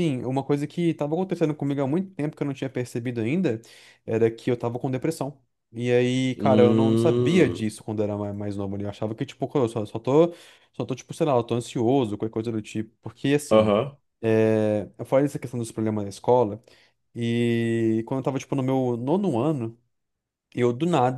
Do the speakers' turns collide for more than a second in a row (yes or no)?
yes